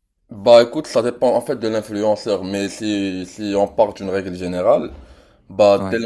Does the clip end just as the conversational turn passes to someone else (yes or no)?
no